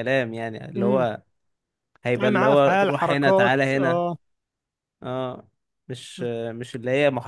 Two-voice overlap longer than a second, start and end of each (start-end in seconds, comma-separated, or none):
2.1-4.0